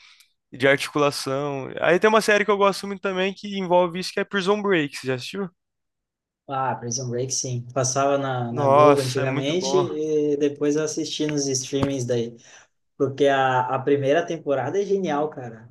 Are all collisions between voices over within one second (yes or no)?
no